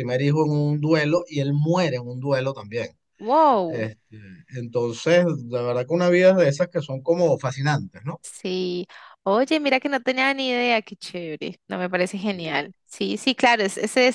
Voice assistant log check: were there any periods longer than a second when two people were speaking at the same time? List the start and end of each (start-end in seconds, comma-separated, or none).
none